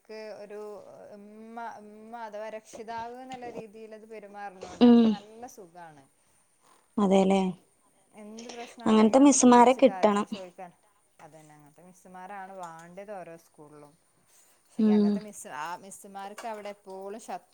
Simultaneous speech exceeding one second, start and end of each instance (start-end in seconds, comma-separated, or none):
8.9-10.3